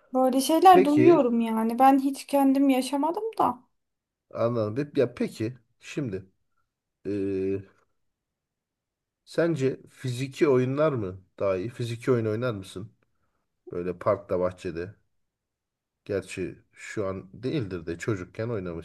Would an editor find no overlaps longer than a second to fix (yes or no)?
yes